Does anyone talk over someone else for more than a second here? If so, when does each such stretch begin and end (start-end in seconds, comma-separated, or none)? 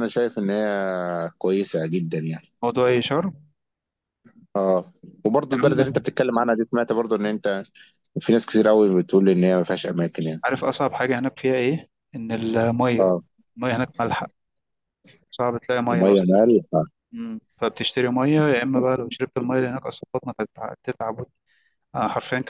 none